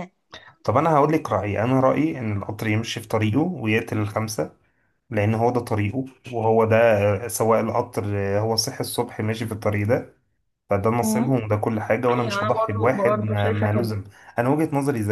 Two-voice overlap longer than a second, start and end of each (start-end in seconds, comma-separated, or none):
12.1-13.9